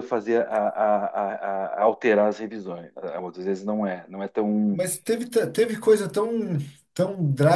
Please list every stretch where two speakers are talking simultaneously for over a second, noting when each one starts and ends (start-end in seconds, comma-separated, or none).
none